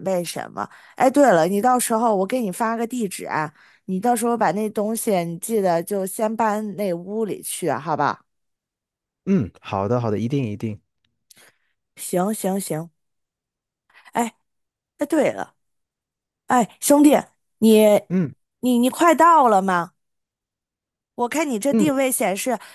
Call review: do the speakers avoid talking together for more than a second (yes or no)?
yes